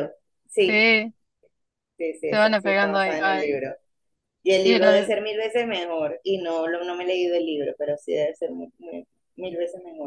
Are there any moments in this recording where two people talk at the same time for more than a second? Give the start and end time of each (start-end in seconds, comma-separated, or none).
2.3-3.6